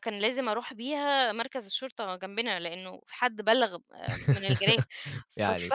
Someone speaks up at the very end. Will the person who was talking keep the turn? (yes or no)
no